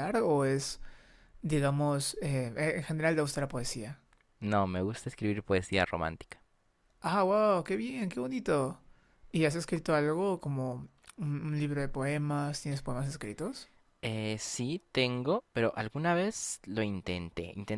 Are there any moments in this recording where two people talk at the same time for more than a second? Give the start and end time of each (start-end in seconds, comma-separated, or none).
none